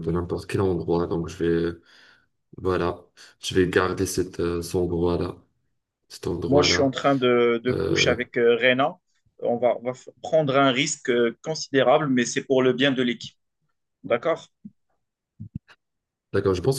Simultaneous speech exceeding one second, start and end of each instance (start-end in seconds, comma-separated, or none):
none